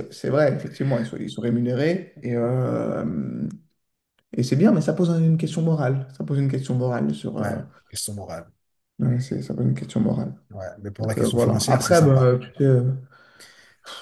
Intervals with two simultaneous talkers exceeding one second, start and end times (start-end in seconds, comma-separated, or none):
11.0-12.3